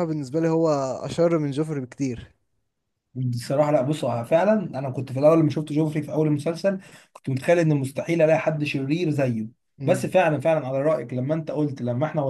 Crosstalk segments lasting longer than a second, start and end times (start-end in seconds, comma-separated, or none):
none